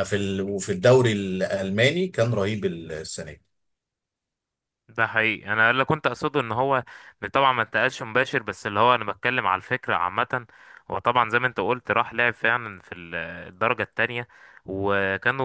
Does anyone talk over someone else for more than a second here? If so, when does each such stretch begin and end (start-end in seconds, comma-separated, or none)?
none